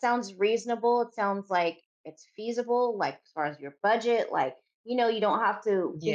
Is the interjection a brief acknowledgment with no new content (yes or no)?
yes